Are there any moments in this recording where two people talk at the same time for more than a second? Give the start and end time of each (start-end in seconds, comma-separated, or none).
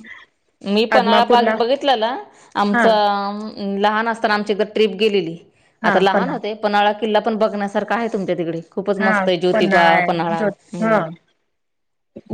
9.0-11.0